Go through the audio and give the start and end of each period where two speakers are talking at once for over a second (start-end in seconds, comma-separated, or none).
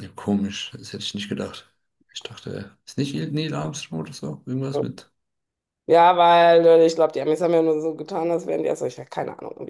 none